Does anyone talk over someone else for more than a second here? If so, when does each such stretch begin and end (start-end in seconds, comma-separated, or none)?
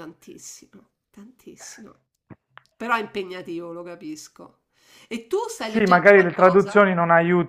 5.6-6.8